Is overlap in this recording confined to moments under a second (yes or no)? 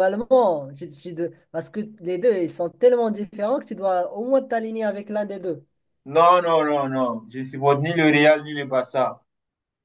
yes